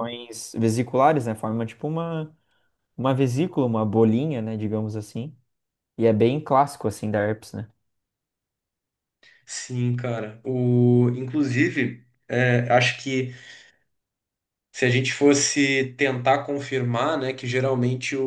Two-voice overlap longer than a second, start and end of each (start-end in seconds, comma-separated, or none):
none